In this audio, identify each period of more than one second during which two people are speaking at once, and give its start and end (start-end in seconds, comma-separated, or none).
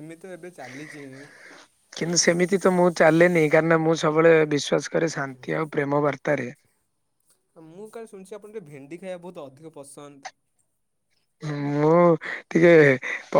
none